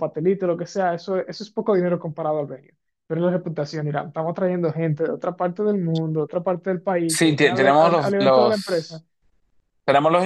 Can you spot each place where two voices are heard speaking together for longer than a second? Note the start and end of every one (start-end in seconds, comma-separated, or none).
7.1-9.0